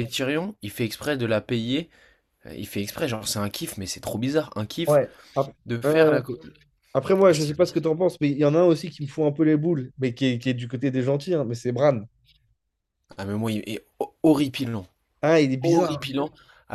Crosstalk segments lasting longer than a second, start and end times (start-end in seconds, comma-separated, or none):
none